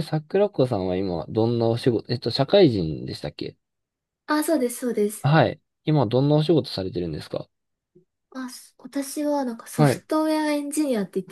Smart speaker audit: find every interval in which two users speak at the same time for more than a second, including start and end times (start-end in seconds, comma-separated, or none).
none